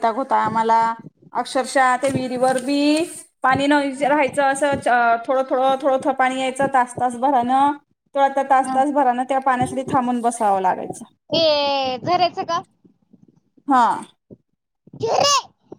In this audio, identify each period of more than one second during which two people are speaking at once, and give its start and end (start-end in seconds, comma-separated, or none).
none